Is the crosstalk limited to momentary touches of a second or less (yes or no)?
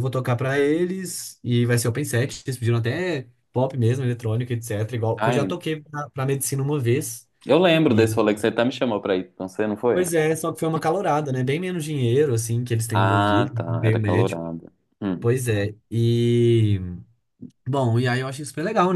no